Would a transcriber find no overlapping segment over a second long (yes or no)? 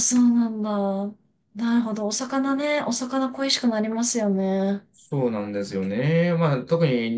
yes